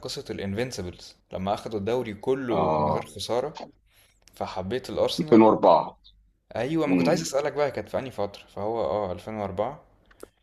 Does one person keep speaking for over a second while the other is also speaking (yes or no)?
no